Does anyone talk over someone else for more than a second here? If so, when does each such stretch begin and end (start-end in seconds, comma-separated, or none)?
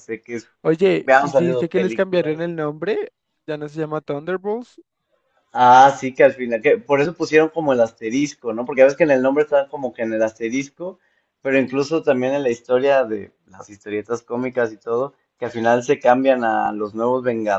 0.6-2.5